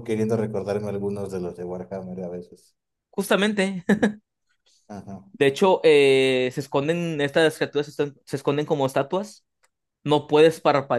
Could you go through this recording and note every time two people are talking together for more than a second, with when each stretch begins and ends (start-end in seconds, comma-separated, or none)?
none